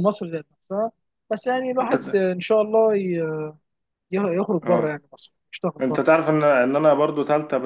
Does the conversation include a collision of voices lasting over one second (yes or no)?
no